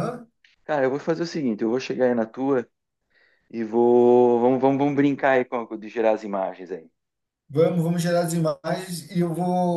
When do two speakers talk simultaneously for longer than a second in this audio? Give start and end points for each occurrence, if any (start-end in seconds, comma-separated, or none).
none